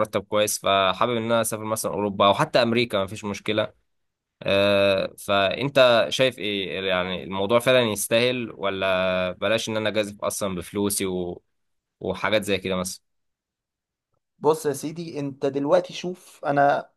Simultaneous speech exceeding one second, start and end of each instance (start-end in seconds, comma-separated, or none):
none